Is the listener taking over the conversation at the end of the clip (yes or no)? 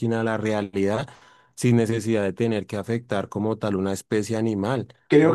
yes